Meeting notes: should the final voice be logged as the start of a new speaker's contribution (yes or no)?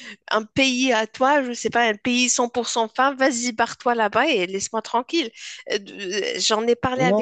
yes